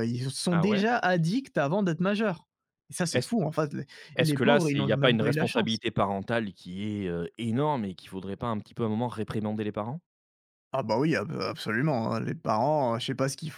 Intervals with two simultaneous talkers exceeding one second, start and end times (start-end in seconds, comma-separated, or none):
4.2-5.8